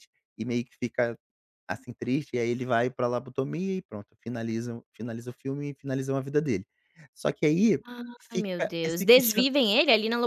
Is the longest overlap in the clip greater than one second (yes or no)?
yes